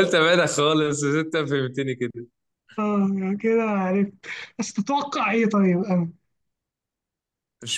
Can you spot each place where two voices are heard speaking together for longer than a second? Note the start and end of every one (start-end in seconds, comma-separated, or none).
none